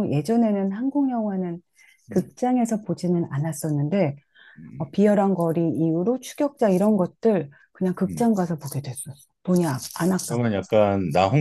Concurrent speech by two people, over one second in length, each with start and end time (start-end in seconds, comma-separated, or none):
none